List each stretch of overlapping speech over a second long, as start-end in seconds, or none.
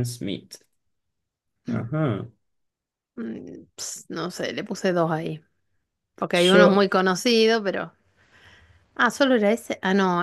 none